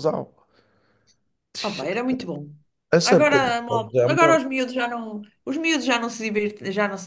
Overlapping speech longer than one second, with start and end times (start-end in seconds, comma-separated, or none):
3.0-4.4